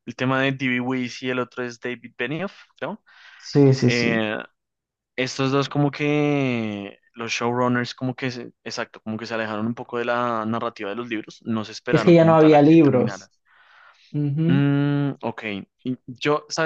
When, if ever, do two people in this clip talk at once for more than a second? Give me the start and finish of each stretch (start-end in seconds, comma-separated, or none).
11.9-13.3